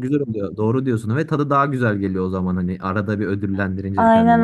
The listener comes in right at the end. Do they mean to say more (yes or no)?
yes